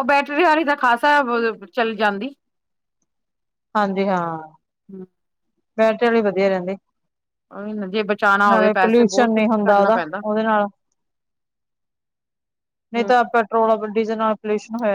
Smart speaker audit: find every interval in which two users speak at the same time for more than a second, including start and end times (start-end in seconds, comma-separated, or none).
8.5-10.2